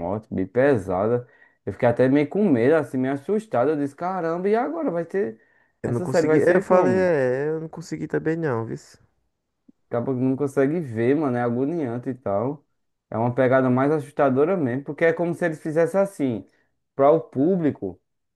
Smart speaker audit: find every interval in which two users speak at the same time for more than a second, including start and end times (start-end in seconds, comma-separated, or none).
5.8-7.1